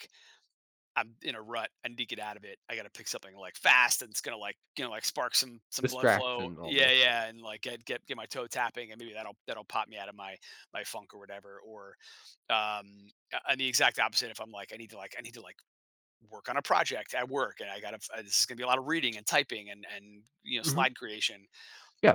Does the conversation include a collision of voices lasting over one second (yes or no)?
yes